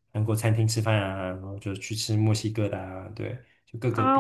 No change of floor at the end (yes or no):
no